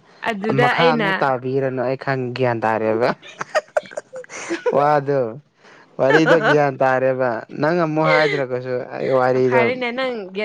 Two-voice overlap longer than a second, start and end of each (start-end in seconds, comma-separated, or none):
none